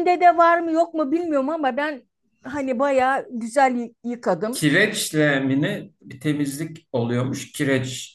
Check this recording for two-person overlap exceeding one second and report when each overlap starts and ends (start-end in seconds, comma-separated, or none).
none